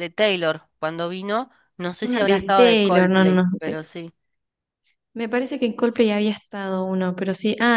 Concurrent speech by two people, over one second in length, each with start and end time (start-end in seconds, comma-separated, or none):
2.0-3.5